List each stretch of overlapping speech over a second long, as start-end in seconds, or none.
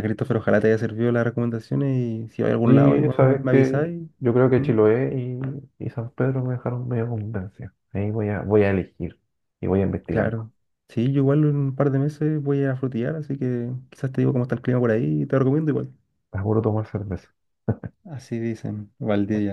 2.6-4.0